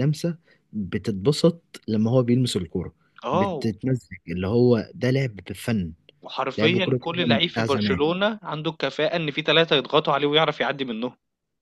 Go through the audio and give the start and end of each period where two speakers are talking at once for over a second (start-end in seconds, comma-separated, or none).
6.6-8.0